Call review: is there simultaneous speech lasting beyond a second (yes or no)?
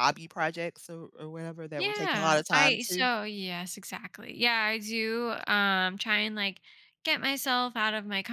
yes